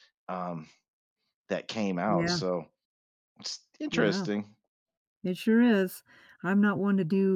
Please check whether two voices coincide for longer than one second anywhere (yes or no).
no